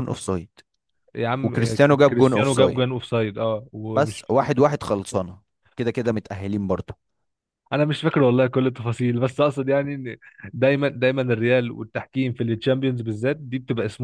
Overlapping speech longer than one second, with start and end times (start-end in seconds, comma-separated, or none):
1.4-2.8